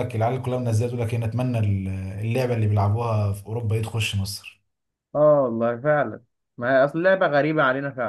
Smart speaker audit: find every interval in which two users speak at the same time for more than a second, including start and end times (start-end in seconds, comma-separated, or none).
none